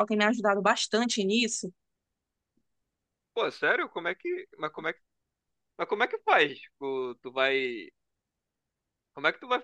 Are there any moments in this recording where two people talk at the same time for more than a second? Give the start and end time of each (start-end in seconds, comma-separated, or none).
none